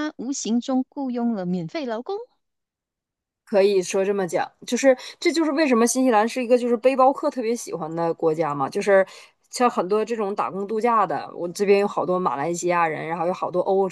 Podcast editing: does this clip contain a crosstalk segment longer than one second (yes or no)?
no